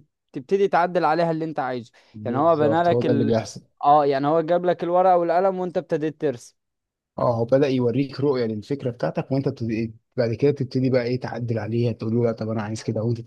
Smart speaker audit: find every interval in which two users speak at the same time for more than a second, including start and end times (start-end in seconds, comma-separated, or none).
2.1-3.4